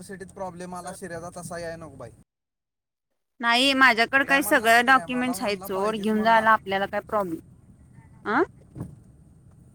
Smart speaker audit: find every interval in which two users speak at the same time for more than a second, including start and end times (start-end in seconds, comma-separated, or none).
4.7-6.5